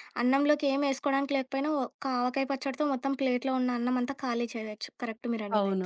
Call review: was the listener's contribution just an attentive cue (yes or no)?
no